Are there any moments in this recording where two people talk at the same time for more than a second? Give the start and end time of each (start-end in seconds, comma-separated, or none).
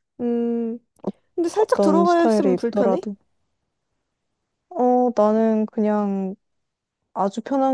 1.6-3.1